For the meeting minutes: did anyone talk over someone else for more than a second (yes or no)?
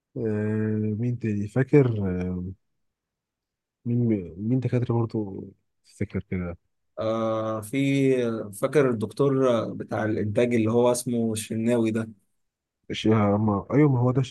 no